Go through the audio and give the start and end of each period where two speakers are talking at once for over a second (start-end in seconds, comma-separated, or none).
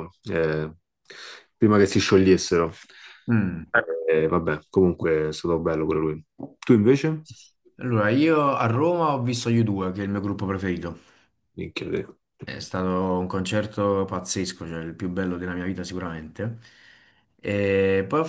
none